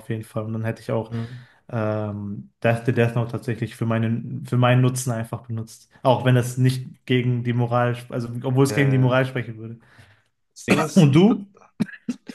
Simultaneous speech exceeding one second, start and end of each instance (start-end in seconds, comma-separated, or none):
none